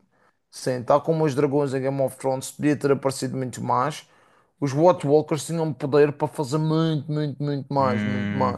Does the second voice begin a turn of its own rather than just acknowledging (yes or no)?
yes